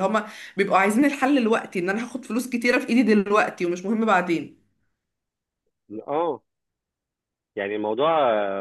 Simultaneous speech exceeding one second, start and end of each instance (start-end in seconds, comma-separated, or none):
none